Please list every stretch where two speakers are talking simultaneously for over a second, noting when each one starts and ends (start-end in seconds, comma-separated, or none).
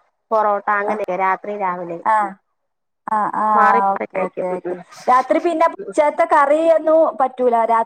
none